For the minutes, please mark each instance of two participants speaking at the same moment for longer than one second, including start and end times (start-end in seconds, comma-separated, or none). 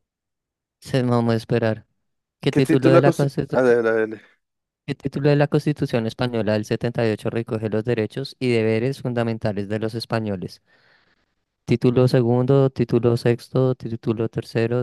2.5-3.8